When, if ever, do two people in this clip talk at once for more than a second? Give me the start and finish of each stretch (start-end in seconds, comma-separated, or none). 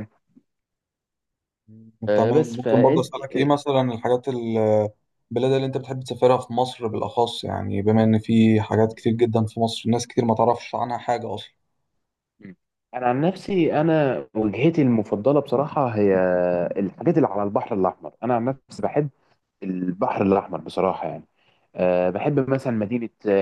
2.1-3.5